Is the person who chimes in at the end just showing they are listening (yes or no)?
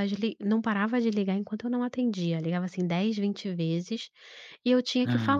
yes